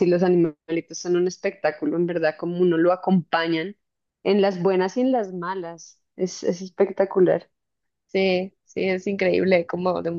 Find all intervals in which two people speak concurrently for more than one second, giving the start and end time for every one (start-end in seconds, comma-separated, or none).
none